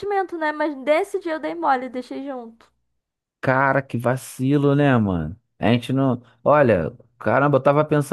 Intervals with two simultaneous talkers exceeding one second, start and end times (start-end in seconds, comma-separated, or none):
none